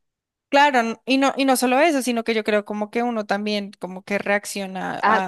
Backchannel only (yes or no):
no